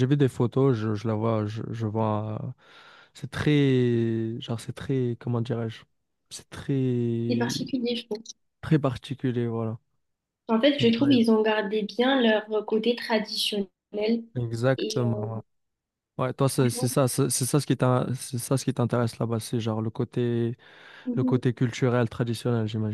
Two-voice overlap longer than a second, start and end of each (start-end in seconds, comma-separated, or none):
none